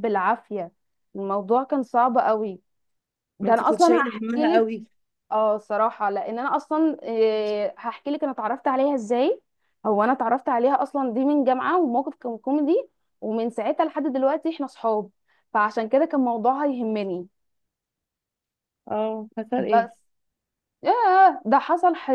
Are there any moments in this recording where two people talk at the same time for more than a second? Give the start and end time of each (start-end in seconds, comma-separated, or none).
3.4-4.6